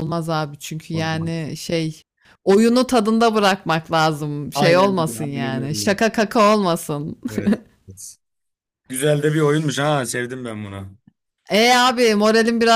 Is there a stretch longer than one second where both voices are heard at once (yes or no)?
yes